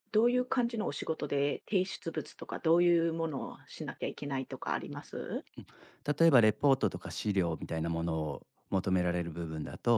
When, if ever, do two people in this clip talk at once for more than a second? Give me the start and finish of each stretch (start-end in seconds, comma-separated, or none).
none